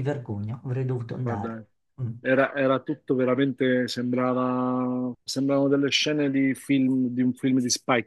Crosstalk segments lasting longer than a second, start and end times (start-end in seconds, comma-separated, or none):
none